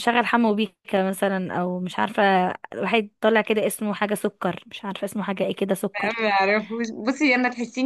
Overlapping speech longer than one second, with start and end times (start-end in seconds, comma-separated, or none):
none